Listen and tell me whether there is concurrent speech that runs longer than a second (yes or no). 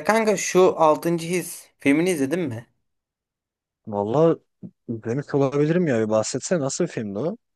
no